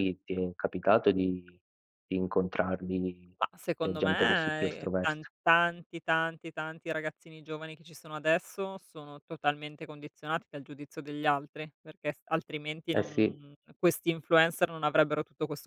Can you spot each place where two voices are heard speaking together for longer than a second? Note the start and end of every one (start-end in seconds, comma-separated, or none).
3.8-5.3